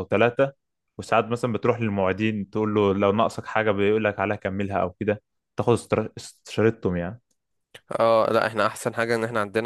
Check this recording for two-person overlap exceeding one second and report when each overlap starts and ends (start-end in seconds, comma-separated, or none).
none